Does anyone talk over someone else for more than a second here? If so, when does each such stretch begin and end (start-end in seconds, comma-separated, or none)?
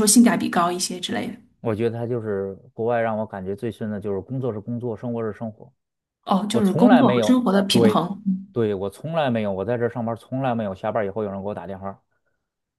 6.5-8.1